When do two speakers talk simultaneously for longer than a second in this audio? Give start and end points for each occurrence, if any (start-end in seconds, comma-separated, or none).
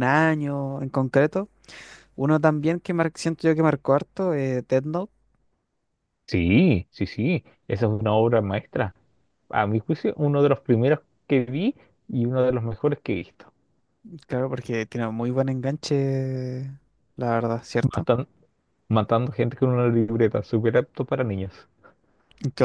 none